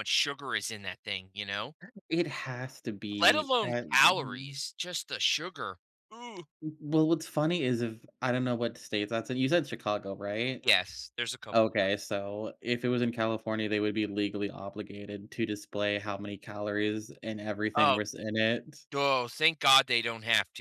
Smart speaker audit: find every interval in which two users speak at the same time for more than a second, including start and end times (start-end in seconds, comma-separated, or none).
3.2-4.6